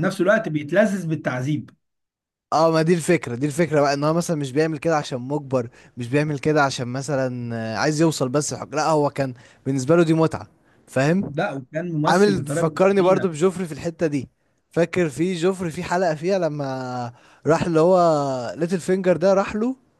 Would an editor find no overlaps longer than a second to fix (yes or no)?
no